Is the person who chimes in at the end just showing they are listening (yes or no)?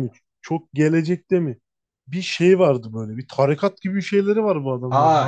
no